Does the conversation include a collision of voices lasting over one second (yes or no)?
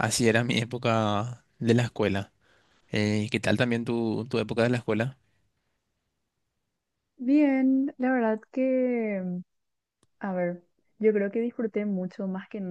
no